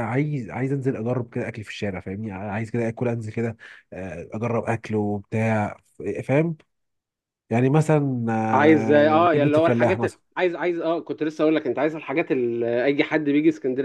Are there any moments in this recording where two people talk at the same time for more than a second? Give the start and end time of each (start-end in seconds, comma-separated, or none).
8.5-10.2